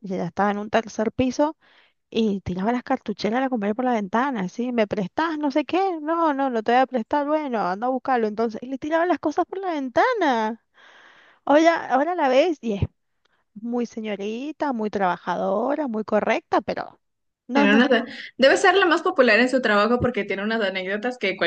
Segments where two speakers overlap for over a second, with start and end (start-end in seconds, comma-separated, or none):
none